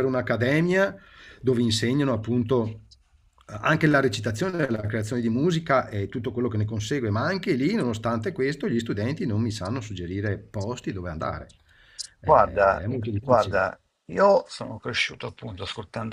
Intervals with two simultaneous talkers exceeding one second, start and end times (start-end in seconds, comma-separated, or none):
12.2-13.7